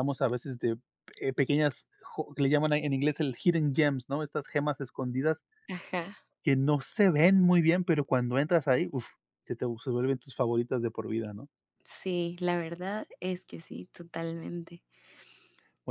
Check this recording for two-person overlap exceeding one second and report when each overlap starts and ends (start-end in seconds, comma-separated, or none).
none